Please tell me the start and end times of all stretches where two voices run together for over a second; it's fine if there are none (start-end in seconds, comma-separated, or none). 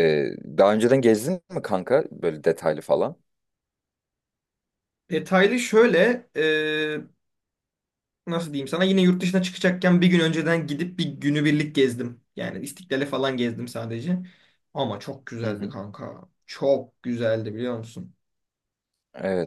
none